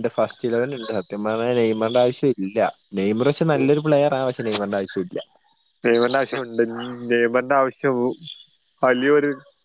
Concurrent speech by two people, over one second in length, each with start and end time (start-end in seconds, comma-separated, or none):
none